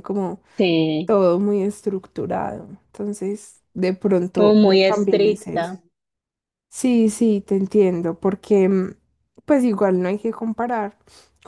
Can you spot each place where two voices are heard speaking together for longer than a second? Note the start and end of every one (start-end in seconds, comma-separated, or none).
4.3-5.7